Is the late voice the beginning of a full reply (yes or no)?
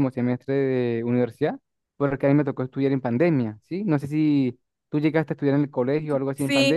yes